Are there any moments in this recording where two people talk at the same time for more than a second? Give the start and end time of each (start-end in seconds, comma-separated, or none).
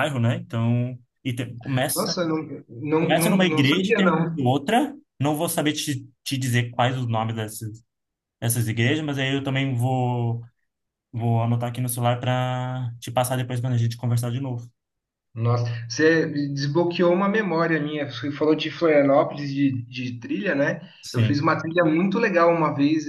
3.0-4.5